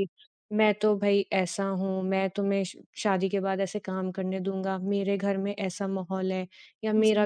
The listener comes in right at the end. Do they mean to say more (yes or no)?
no